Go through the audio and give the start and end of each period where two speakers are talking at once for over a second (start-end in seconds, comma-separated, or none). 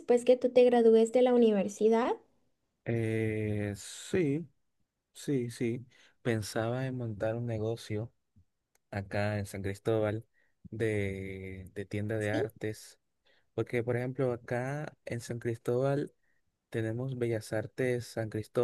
none